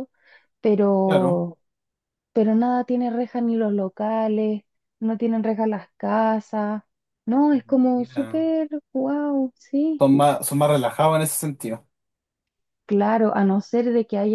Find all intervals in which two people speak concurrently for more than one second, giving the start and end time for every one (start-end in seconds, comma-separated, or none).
none